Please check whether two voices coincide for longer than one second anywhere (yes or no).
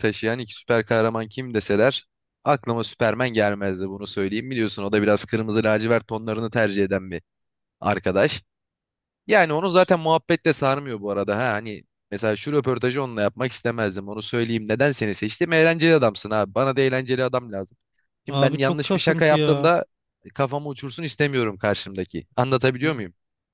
yes